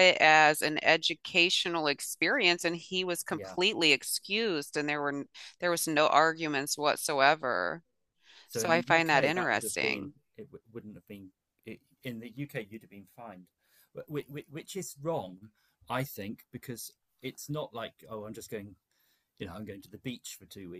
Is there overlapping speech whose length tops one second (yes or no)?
yes